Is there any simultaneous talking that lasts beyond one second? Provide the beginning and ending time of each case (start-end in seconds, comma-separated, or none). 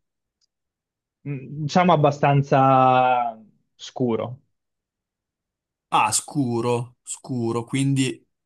none